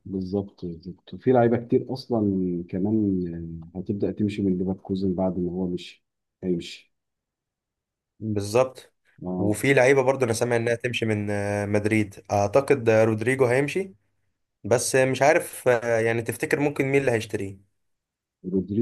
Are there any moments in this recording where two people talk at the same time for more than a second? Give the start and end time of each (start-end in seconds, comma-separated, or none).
none